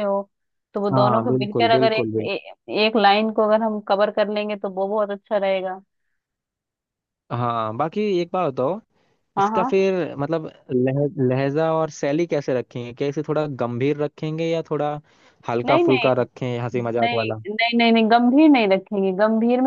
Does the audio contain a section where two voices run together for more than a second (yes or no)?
yes